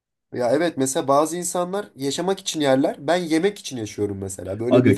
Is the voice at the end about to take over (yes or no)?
yes